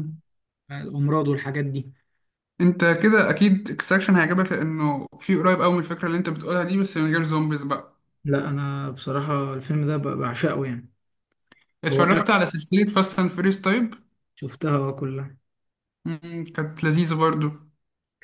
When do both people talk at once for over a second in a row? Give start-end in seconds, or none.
none